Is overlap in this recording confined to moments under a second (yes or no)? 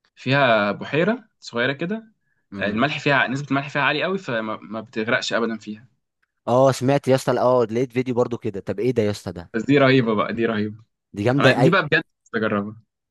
yes